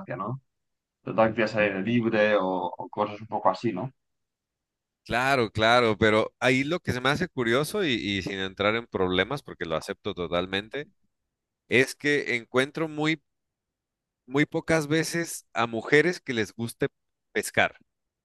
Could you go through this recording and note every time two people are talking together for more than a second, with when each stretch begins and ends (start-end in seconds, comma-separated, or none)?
none